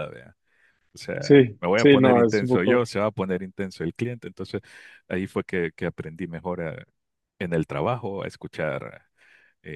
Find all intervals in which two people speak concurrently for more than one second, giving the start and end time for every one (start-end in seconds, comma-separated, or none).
1.2-2.9